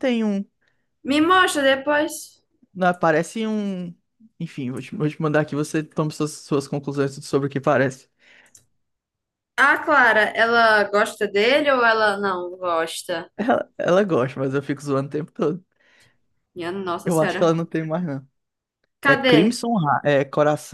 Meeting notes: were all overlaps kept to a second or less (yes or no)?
yes